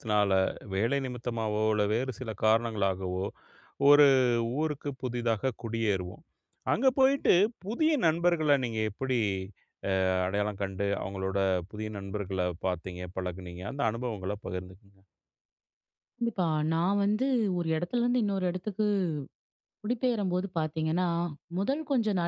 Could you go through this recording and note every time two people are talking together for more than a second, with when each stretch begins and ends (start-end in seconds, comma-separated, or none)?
none